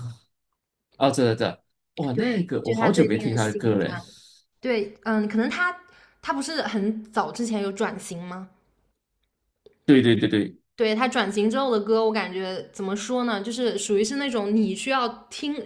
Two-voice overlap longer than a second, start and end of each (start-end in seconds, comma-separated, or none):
2.1-3.9